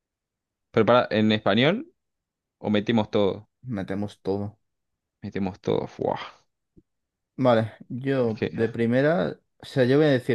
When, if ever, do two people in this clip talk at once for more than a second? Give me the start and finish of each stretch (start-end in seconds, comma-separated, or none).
none